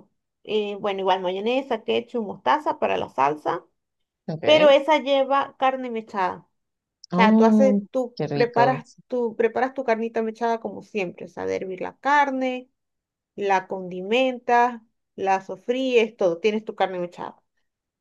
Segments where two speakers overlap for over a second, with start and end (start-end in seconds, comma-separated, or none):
7.1-8.8